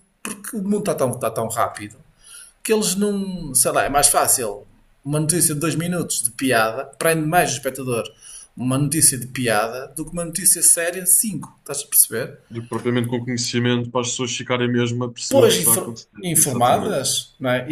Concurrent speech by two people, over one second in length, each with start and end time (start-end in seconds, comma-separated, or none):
15.3-17.0